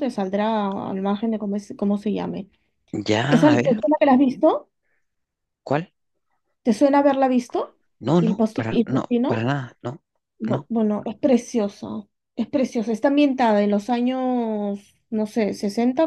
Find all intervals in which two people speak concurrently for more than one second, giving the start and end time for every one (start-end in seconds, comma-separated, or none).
8.2-9.5